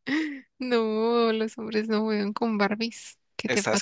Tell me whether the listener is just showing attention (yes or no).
no